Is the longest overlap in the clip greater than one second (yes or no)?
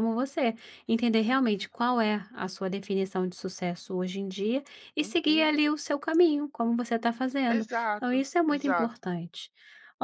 yes